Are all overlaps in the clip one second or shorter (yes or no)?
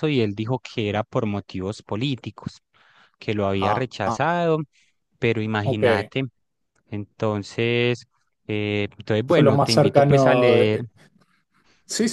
no